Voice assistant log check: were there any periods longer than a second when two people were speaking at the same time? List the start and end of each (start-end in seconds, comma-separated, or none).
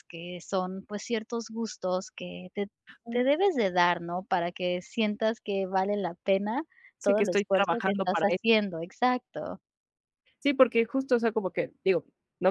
7.0-8.3